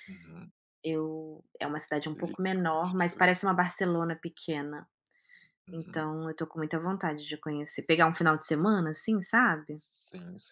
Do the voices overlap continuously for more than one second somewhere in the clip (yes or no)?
yes